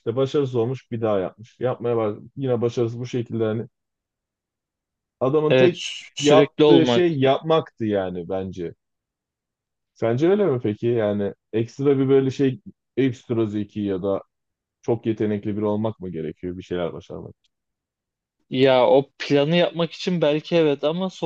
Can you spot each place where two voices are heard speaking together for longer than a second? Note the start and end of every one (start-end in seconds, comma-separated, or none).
5.5-7.0